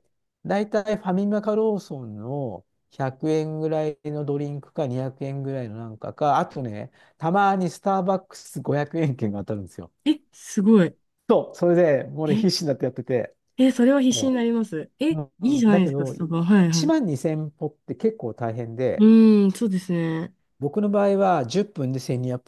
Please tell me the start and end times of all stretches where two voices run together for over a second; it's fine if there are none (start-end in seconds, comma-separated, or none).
15.1-16.9